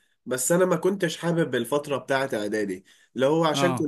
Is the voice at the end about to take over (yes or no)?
no